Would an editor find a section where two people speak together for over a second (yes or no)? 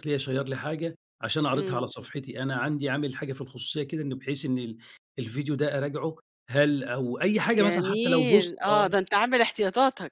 yes